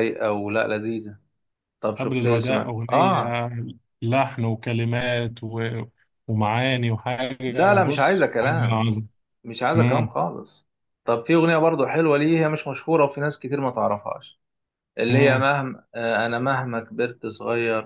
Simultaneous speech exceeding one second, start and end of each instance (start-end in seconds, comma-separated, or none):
2.0-3.4, 7.5-8.8